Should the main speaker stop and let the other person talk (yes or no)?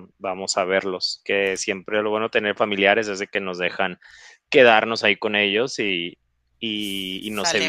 no